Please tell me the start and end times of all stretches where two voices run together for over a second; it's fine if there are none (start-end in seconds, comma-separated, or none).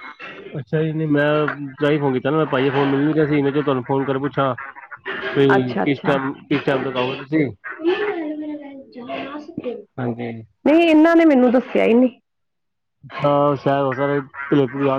none